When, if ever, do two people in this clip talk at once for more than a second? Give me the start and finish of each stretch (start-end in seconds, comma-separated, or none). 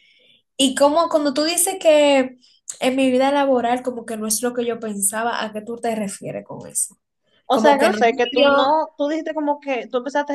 7.5-8.8